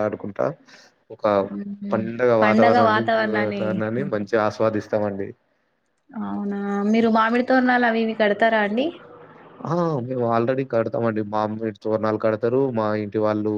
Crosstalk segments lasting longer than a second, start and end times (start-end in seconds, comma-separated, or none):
none